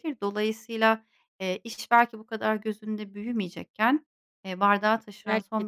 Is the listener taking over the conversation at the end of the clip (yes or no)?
no